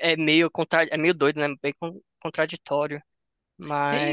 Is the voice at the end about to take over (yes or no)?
yes